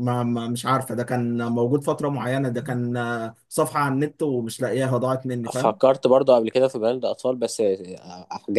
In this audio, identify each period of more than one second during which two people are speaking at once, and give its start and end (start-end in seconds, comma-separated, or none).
none